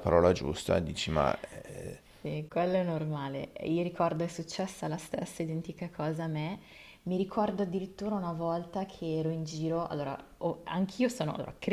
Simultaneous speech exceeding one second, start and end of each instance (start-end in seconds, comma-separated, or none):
none